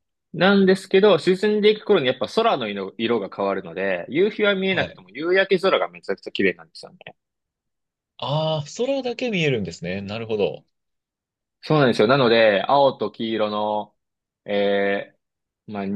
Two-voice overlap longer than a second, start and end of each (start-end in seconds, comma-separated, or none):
none